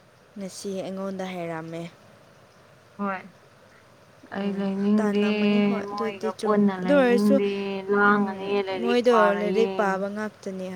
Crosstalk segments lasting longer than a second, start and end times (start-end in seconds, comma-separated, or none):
5.9-7.3, 8.1-9.7